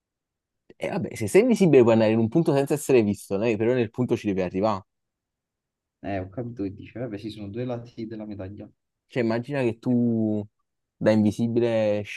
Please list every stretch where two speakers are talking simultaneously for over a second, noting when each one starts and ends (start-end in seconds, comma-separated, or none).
none